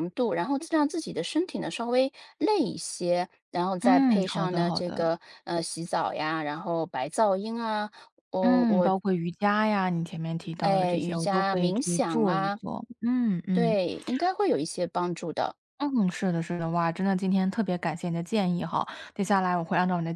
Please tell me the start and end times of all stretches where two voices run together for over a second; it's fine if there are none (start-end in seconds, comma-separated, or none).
3.8-5.1, 10.6-12.6